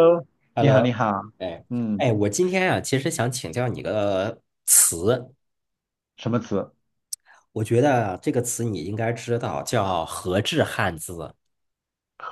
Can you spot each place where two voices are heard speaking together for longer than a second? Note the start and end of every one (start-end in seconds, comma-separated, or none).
none